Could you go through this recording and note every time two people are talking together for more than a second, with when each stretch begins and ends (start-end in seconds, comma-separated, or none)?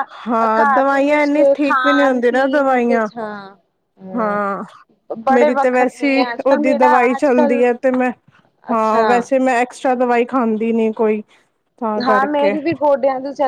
1.6-3.1, 5.3-7.6